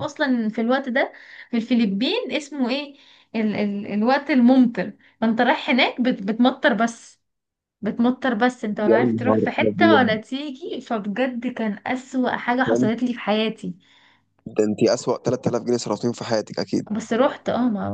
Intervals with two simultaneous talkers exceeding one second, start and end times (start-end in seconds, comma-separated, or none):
8.9-10.1